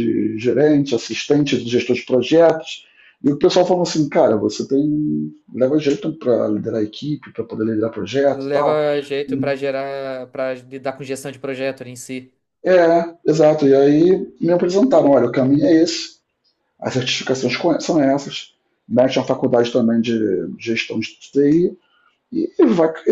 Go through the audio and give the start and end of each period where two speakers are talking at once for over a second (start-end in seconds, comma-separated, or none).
none